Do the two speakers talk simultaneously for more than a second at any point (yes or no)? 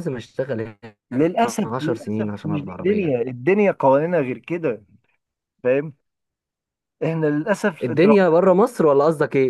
yes